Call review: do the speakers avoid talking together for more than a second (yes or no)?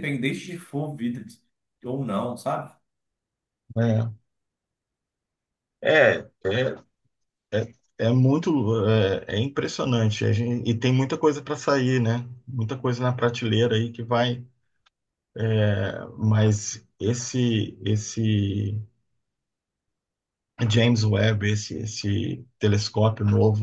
yes